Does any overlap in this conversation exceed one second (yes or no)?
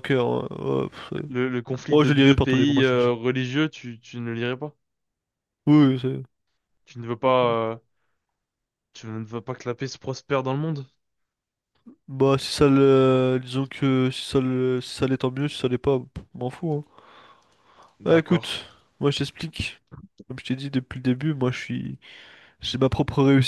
yes